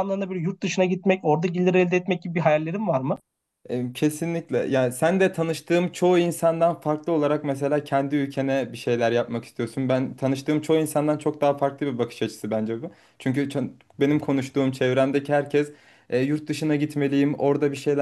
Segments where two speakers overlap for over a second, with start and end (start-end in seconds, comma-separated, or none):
none